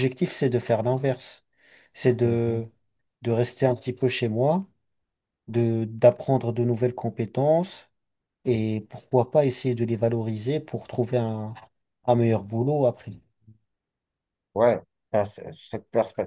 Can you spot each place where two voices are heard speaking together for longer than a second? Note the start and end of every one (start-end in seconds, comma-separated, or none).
none